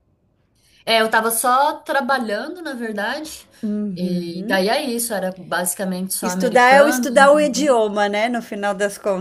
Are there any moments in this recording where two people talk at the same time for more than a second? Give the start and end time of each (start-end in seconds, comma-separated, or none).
6.2-7.9